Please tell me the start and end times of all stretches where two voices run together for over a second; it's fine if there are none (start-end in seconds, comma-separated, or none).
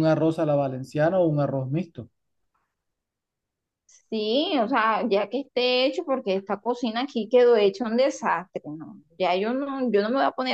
none